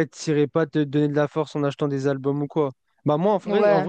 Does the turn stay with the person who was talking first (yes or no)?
yes